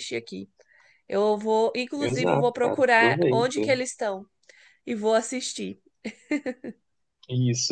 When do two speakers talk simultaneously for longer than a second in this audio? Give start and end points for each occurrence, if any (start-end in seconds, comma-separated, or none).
2.0-3.6